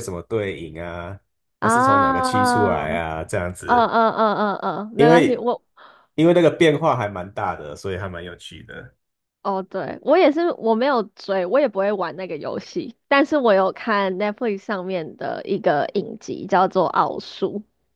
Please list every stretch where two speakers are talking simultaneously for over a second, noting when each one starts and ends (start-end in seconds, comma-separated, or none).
1.6-3.0